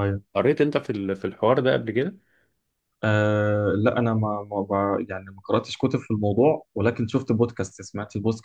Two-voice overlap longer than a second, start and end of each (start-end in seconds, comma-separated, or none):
none